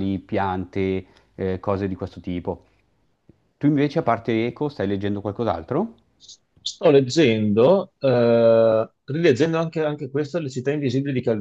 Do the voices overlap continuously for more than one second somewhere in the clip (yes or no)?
no